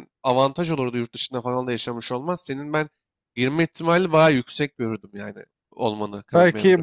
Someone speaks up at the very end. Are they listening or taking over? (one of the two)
taking over